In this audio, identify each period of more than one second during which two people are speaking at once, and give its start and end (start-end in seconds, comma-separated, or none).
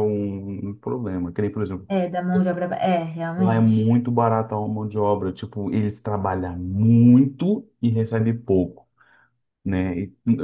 none